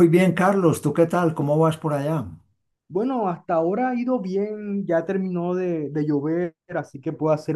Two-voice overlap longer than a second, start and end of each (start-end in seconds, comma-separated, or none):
none